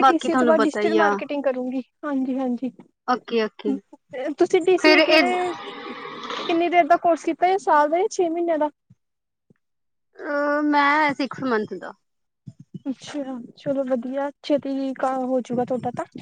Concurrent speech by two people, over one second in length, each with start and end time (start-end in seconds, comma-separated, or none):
none